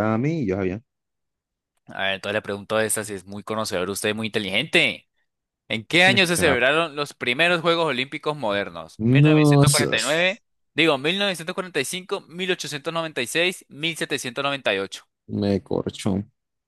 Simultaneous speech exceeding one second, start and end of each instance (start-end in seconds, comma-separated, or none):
9.0-10.4